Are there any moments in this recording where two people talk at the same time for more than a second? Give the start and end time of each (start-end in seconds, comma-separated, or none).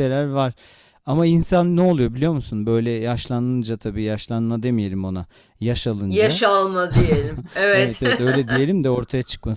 none